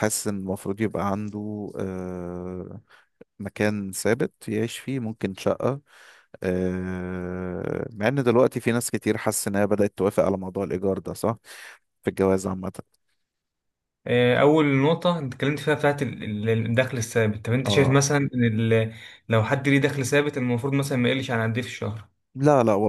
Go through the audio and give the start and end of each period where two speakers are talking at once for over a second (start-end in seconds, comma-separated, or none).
none